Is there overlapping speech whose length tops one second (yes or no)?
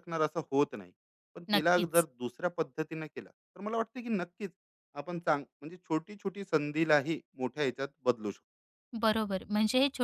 no